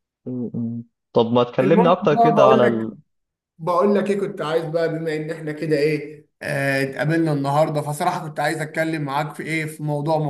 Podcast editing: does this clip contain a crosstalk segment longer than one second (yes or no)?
yes